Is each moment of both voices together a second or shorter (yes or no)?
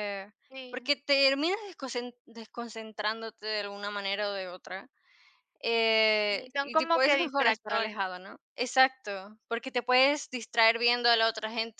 no